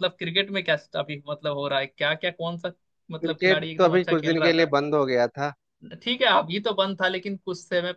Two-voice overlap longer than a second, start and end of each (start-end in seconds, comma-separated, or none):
3.2-4.7